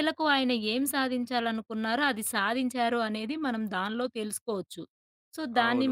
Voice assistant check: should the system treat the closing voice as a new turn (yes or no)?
yes